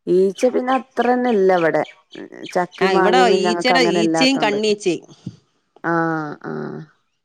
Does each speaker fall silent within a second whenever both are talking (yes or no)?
no